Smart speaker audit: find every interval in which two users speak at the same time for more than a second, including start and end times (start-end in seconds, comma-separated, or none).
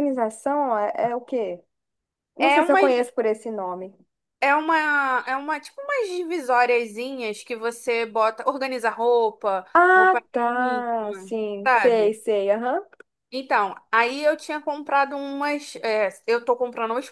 9.7-12.2